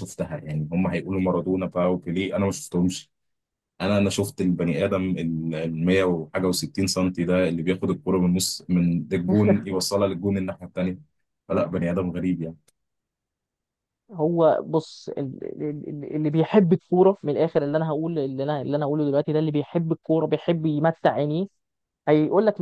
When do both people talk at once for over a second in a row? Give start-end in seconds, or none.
none